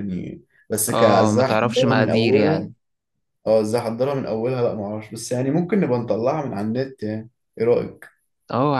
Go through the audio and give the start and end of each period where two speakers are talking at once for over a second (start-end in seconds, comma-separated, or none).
0.9-2.7